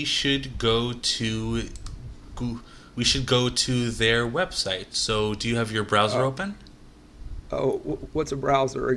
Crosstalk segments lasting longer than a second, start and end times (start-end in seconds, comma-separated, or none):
none